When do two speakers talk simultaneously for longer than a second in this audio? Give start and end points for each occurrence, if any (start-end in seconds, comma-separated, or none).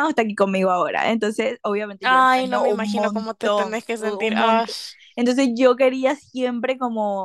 2.0-4.7